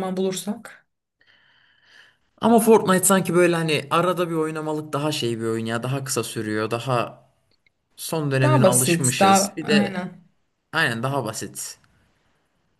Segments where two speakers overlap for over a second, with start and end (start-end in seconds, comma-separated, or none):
8.4-10.0